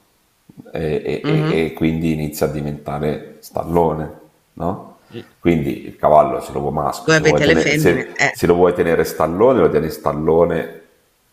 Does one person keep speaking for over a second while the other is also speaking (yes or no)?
yes